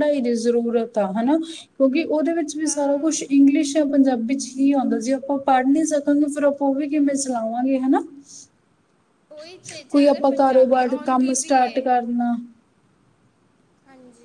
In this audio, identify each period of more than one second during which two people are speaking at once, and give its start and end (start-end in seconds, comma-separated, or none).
9.9-11.8